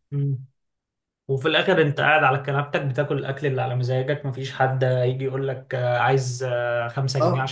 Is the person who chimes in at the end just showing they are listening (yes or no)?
no